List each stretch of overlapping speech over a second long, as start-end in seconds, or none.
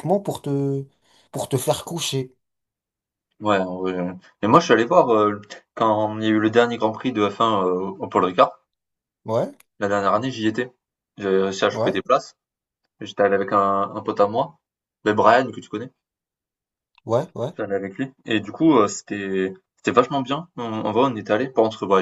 none